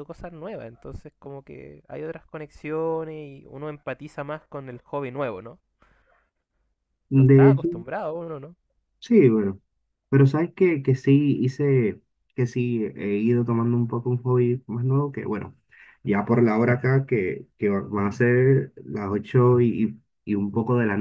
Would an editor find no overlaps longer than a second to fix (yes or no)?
yes